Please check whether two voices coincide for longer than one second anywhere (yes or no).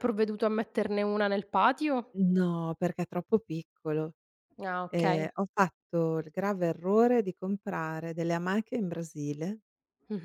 no